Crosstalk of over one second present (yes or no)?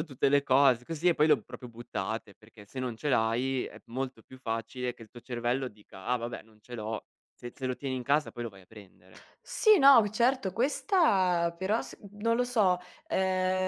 no